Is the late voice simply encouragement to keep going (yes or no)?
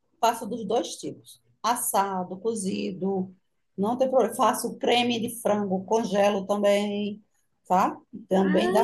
yes